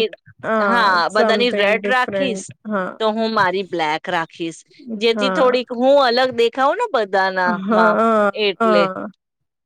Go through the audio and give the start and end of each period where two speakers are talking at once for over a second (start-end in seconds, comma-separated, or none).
1.1-2.5